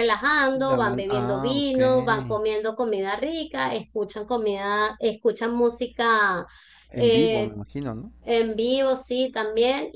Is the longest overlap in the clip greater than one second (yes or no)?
yes